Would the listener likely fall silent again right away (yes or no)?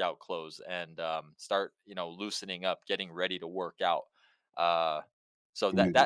yes